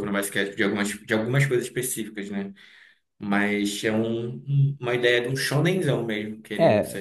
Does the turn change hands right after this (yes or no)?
yes